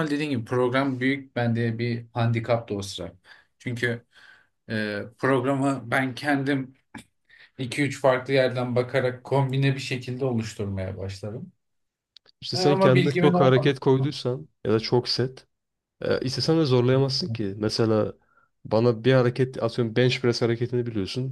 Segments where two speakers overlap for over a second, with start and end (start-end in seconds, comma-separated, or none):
12.5-13.8